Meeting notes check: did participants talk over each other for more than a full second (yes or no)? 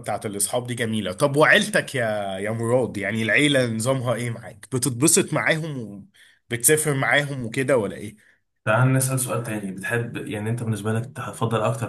no